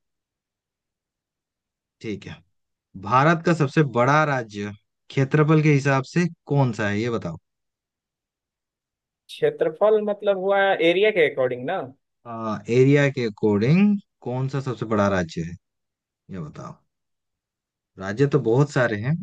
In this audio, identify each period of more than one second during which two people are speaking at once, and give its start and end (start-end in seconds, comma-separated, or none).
none